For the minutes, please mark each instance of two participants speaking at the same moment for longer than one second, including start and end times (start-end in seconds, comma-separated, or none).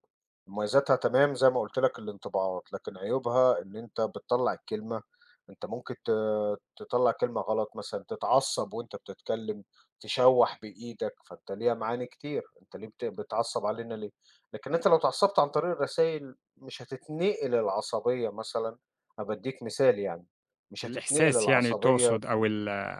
20.8-22.2